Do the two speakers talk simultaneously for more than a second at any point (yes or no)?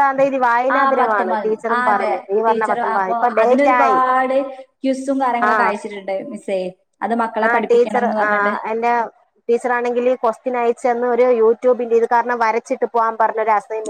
yes